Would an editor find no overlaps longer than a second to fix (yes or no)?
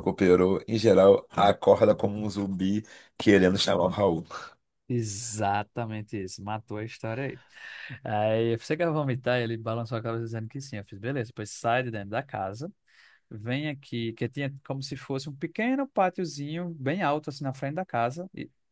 yes